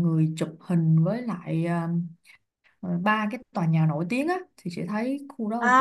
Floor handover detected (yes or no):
yes